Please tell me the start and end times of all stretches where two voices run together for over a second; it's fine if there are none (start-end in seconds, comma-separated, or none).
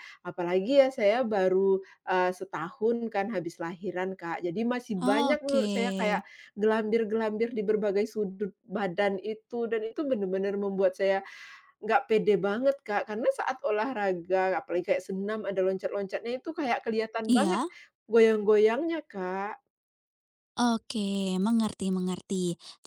5.0-6.2